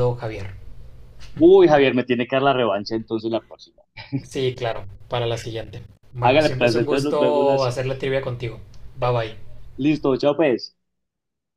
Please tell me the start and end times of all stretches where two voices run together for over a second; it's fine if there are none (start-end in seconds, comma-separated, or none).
6.2-7.9